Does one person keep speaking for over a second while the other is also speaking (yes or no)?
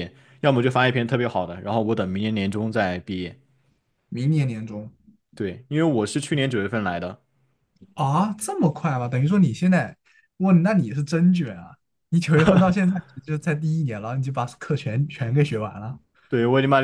no